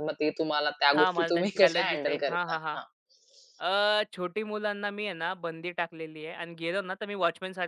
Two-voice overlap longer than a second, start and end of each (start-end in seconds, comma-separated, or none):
0.9-2.8